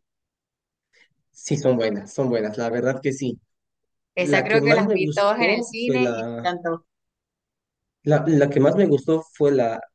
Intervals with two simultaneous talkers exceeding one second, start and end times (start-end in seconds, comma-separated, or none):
4.2-6.5